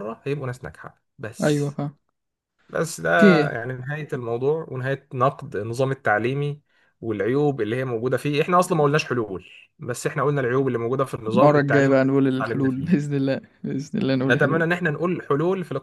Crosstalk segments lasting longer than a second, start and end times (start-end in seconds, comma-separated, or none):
11.3-13.1